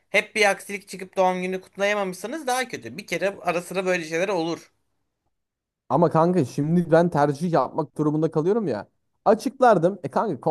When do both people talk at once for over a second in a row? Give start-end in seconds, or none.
none